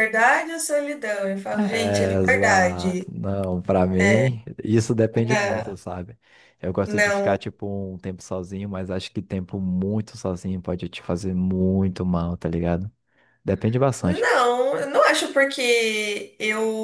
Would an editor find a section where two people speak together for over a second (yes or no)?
yes